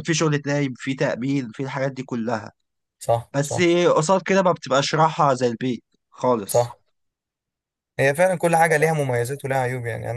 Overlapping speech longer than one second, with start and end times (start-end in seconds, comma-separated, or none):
none